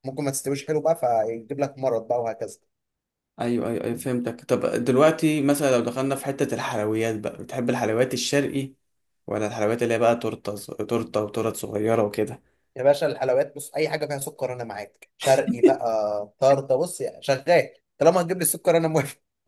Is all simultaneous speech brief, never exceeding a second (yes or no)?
yes